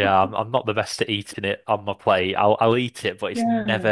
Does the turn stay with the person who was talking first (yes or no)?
yes